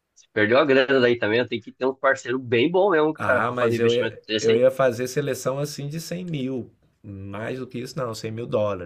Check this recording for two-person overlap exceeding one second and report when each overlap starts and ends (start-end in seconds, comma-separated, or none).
3.2-4.7